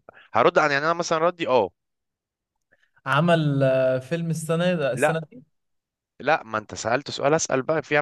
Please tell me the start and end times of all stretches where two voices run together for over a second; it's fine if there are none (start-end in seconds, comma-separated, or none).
none